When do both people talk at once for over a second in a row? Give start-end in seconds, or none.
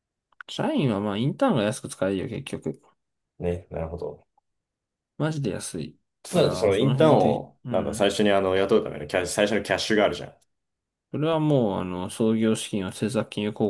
6.2-8.1